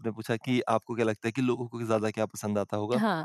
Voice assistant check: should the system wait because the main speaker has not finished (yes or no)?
yes